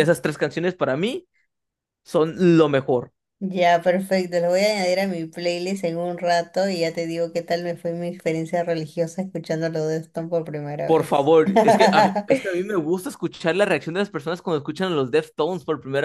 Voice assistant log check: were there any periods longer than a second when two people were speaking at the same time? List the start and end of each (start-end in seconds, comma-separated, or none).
none